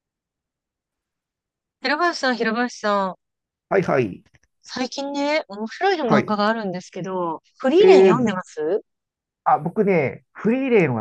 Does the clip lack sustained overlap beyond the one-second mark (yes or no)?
yes